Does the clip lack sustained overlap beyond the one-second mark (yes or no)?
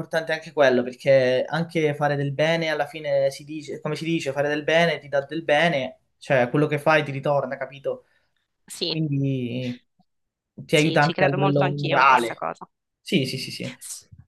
no